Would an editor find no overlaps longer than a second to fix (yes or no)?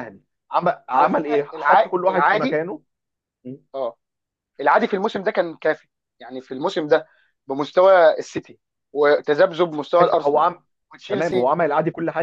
no